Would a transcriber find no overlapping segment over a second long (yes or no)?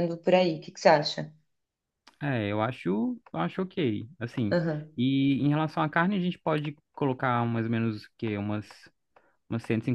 yes